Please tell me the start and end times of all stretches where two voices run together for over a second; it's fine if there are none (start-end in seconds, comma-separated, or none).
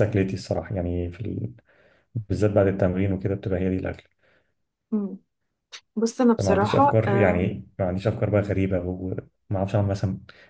6.4-7.6